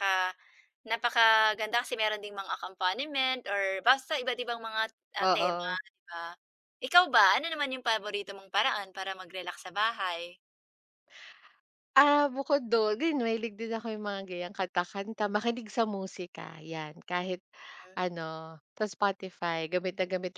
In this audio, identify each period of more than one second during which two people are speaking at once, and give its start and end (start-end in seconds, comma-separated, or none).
none